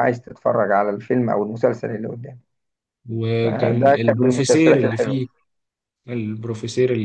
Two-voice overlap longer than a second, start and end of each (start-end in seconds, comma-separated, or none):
3.4-5.2